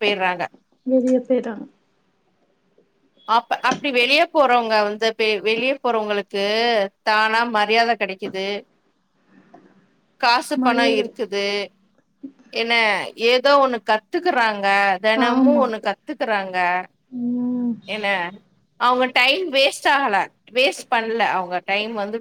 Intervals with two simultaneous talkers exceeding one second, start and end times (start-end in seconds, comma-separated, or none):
none